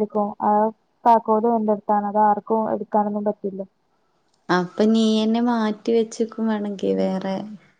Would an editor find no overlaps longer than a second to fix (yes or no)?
yes